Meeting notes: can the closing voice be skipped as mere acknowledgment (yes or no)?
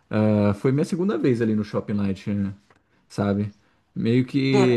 yes